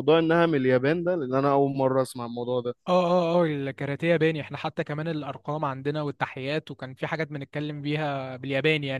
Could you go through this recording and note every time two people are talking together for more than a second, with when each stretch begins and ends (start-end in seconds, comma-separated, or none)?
none